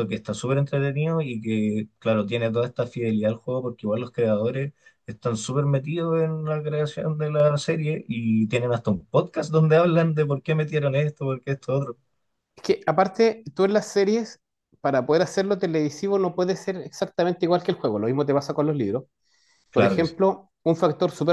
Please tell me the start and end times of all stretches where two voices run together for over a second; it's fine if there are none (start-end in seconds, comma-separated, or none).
none